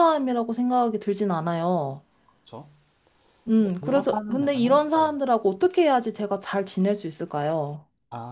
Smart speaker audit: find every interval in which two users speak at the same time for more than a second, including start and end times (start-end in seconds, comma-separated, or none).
3.5-5.1